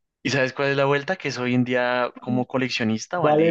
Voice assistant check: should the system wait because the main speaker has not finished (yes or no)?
no